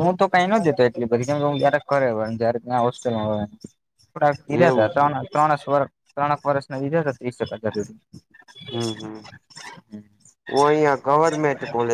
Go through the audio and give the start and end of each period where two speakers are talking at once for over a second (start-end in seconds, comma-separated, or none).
none